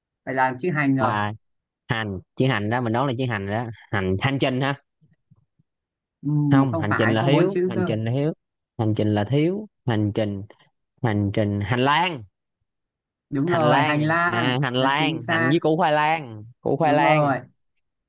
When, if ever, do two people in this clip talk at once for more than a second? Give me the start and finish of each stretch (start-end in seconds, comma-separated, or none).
6.5-7.9, 13.4-15.6